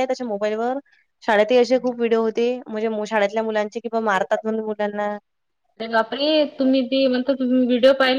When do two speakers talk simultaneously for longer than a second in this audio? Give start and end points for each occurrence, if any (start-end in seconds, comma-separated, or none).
none